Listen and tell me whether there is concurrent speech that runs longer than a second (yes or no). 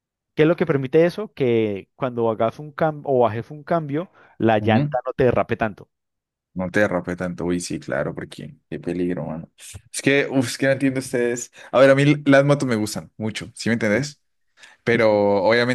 no